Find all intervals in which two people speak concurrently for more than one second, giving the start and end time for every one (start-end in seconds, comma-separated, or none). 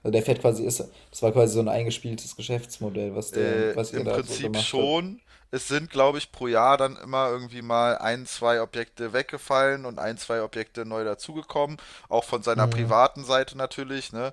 3.3-5.0